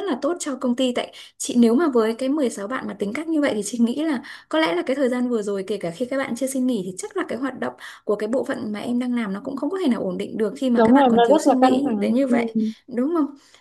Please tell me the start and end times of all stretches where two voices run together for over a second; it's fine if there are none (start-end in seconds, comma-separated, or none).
10.7-12.4